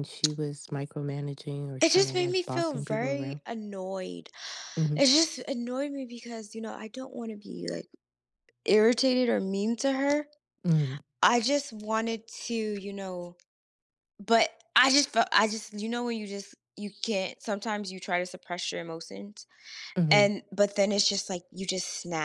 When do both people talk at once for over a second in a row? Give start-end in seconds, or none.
1.8-3.4